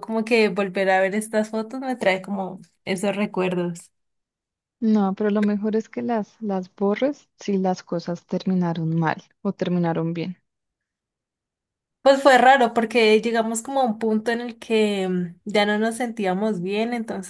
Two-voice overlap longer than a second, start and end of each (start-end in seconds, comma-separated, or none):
none